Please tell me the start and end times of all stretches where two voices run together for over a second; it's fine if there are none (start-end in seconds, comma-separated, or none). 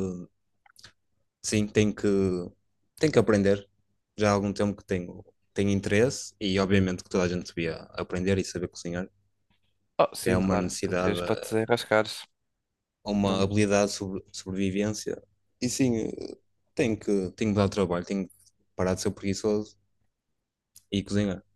10.2-11.6